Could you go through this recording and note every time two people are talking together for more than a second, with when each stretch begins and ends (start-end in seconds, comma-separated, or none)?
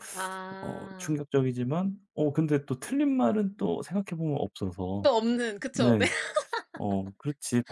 none